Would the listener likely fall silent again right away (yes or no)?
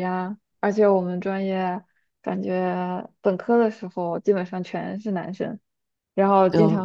yes